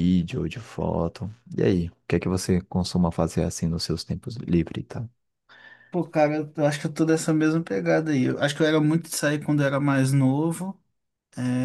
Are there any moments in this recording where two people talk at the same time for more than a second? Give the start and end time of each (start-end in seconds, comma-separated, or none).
none